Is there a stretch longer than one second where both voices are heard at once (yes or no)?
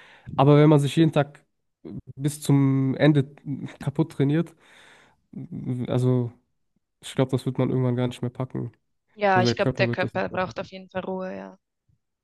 yes